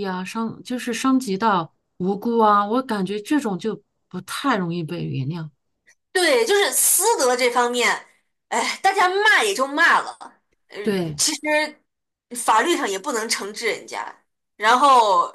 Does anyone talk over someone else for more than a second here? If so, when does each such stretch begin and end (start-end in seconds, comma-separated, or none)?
none